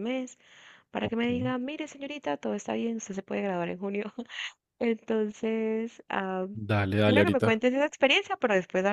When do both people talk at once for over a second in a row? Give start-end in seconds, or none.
none